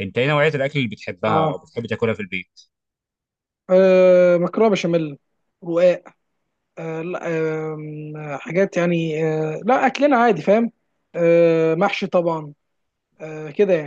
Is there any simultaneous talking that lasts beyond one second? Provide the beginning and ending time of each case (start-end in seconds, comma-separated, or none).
none